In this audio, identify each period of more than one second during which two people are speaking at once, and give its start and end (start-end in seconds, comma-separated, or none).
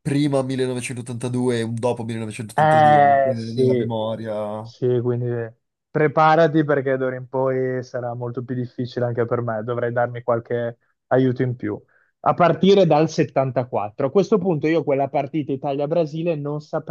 2.5-3.9